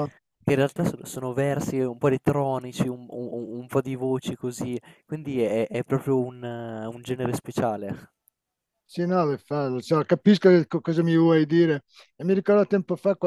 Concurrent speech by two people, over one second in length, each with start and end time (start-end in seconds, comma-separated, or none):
none